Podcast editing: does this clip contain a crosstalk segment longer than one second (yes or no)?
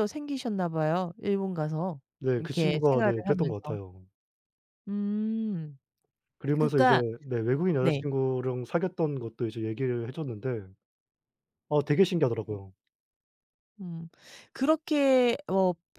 yes